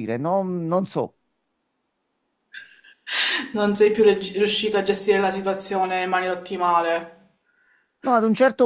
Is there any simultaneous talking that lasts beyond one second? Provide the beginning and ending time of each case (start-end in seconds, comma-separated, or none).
none